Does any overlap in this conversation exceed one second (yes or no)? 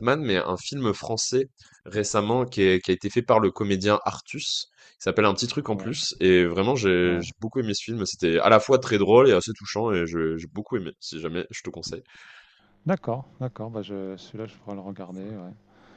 no